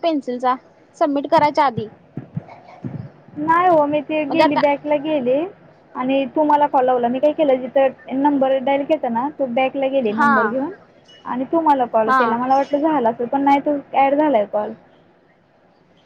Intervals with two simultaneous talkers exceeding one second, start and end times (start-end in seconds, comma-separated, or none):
none